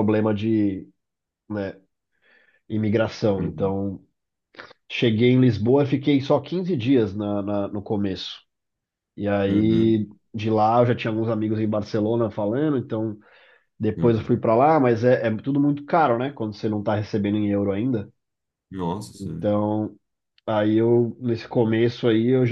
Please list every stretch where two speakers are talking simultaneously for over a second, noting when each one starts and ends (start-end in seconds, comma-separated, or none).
none